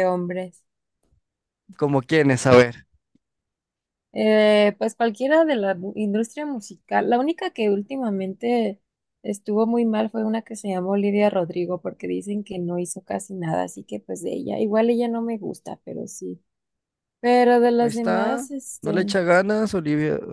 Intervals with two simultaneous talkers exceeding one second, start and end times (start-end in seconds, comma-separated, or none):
17.8-19.1